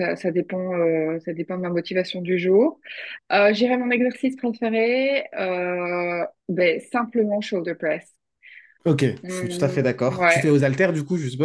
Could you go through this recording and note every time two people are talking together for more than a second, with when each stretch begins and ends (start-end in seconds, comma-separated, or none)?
9.2-10.5